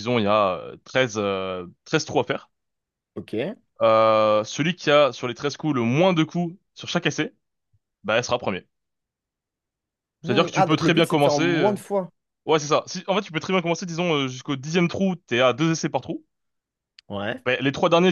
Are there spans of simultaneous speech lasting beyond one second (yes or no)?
yes